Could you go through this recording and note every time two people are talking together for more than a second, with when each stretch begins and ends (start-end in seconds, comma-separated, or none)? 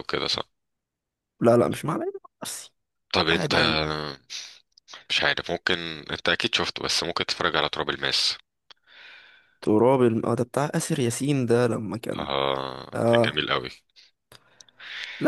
none